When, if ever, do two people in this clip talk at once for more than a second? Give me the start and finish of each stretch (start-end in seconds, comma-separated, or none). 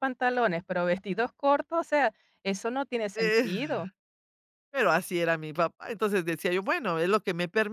none